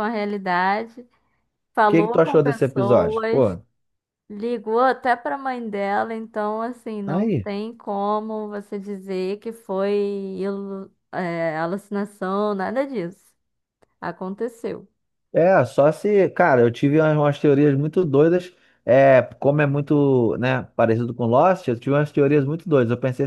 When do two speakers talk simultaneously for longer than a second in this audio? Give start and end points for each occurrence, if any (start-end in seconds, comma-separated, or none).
1.8-3.6